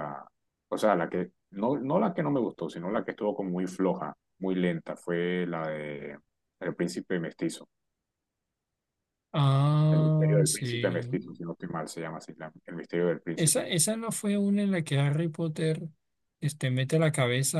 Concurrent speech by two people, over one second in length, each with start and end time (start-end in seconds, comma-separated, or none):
9.9-11.1